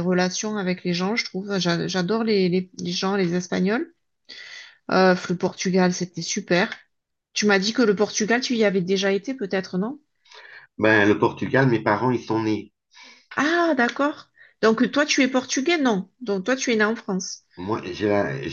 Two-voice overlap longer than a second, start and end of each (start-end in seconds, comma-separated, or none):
none